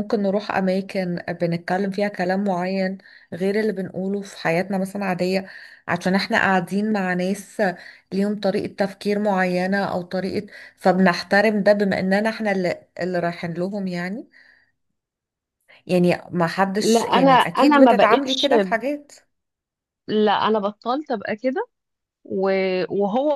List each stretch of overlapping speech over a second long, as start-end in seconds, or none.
16.8-18.5